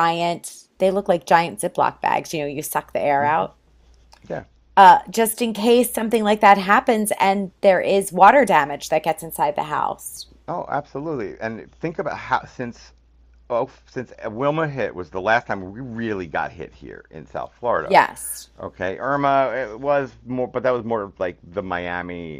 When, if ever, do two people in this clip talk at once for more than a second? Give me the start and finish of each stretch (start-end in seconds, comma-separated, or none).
none